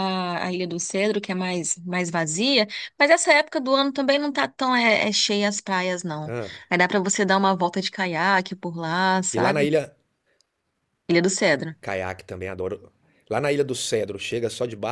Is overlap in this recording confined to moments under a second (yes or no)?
yes